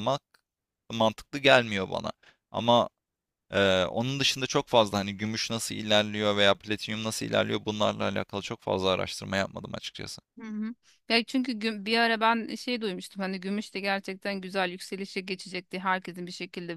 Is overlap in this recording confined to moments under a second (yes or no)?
yes